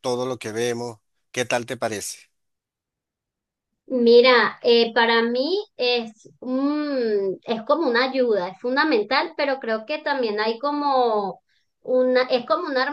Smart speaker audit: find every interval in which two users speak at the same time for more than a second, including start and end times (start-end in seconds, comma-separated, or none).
none